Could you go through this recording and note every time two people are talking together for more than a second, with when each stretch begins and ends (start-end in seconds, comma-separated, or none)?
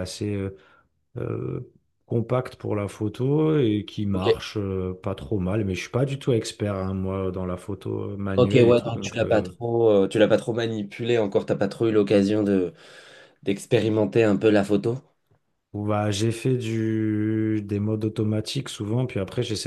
8.4-9.6